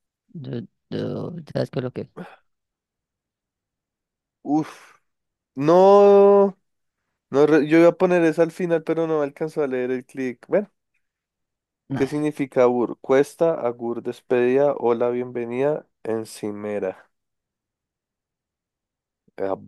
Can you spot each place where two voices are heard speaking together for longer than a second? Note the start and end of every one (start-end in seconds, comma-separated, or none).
none